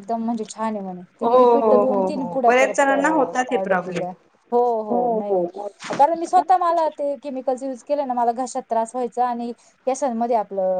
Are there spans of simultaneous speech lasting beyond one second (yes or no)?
yes